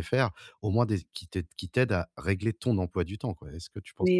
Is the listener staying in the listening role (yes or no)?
no